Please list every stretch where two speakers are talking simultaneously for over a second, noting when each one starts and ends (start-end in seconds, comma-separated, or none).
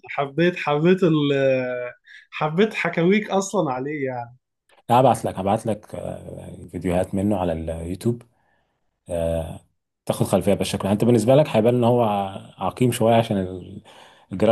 none